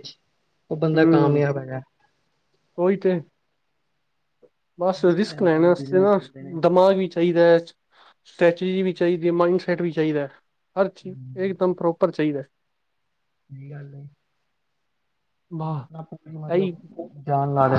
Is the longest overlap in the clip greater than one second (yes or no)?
no